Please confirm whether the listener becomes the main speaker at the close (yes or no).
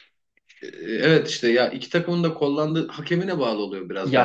yes